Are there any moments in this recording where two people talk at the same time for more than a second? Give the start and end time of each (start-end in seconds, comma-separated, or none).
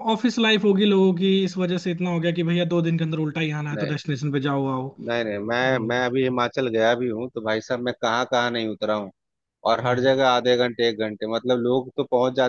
none